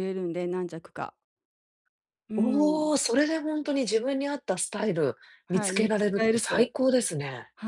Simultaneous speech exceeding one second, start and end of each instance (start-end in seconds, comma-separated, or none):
5.5-6.7